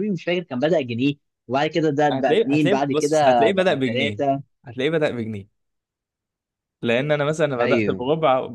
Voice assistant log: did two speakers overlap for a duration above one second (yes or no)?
yes